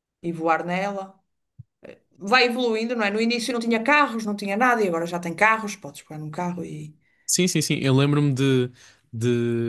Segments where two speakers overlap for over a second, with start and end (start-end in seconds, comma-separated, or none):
none